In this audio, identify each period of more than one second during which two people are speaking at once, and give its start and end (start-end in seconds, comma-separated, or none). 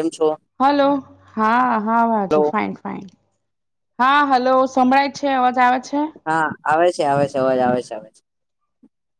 none